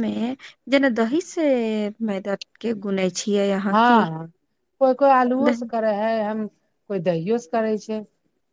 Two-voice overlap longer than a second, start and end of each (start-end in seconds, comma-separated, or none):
none